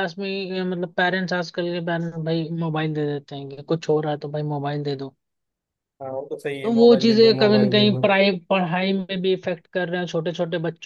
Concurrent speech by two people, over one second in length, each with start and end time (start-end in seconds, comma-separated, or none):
6.6-8.1